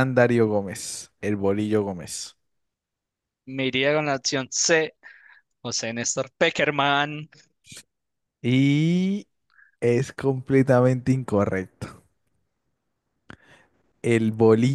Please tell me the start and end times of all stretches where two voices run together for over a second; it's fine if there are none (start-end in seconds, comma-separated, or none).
none